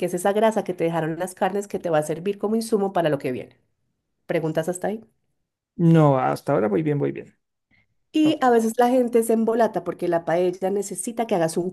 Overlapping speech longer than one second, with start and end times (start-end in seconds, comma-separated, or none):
none